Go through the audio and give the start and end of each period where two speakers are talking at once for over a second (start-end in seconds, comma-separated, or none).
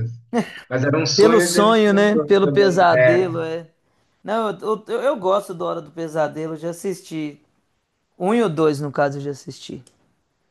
1.1-3.3